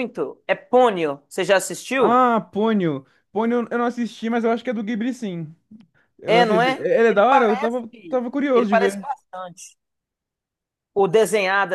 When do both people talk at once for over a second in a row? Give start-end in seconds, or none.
6.2-7.8